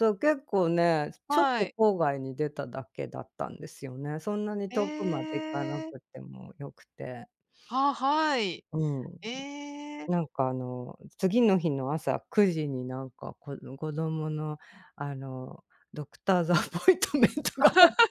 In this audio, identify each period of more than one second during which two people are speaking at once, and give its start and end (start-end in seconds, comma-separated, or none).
4.7-6.0